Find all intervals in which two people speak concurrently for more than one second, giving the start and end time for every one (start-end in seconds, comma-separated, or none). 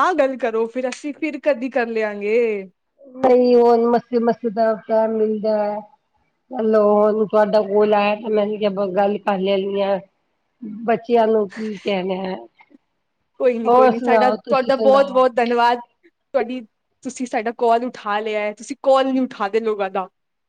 13.7-15.2